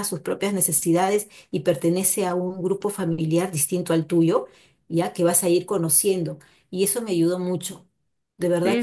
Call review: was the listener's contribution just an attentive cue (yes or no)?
no